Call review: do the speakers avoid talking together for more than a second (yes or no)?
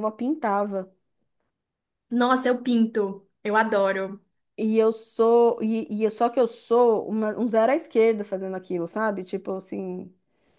yes